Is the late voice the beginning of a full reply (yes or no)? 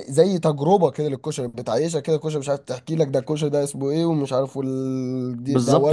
yes